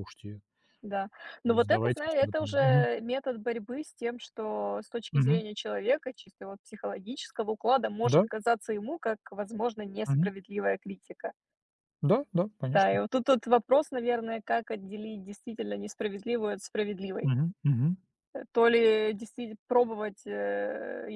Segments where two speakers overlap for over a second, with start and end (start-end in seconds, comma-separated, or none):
1.5-2.9